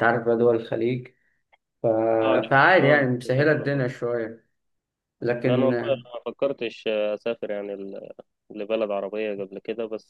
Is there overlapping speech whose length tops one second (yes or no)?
yes